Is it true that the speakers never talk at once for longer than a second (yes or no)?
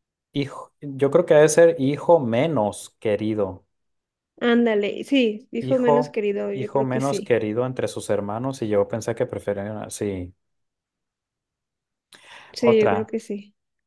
no